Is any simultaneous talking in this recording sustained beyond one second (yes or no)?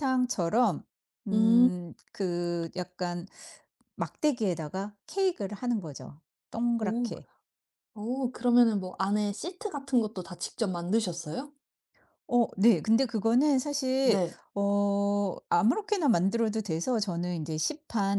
no